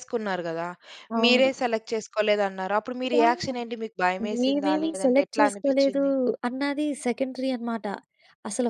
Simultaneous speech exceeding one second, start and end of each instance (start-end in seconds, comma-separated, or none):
4.4-6.0